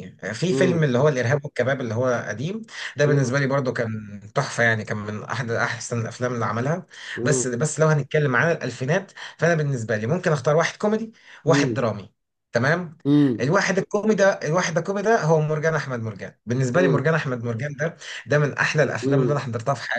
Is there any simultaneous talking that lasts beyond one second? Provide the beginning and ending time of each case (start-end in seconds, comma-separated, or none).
none